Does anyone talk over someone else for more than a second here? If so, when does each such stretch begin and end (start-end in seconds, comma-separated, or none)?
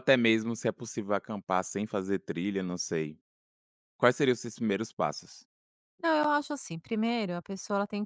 none